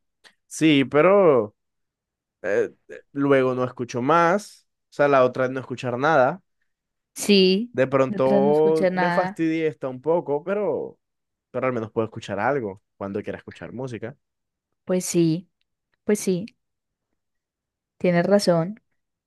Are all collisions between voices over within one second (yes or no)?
no